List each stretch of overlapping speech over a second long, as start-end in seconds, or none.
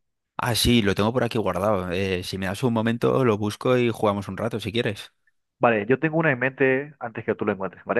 none